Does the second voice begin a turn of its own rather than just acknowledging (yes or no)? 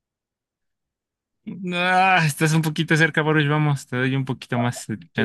yes